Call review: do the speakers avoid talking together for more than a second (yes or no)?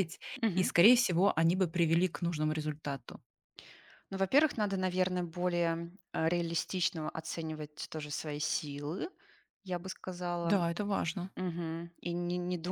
yes